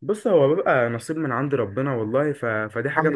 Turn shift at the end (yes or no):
no